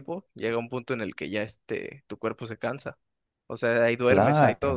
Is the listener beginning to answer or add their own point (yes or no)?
yes